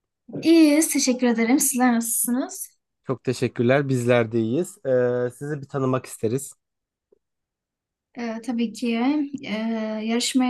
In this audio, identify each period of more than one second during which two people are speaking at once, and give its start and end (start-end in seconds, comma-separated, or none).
none